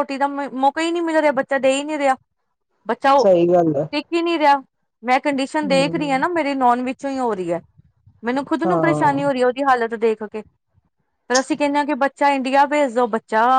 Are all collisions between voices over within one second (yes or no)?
yes